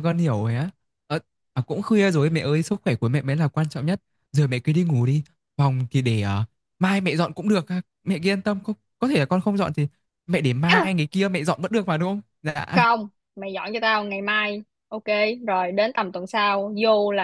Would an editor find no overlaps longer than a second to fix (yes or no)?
yes